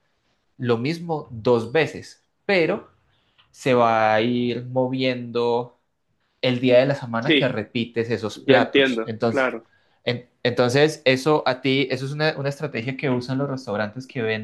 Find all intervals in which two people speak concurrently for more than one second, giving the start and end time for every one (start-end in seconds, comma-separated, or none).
8.3-9.6